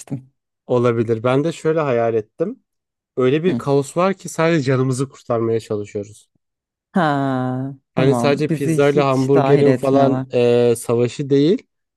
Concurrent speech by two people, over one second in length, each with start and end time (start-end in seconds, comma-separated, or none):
8.0-10.3